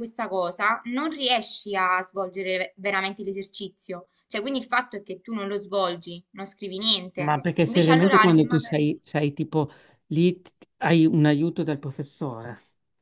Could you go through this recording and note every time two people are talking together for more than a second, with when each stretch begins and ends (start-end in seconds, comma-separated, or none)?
7.2-8.9